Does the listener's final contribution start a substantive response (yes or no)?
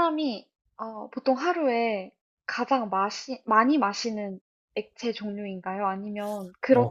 yes